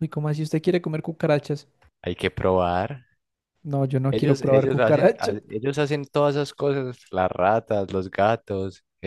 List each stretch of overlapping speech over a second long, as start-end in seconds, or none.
4.1-5.3